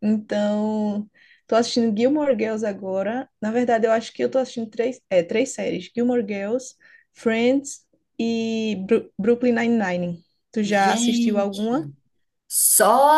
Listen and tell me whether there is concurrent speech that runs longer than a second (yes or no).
yes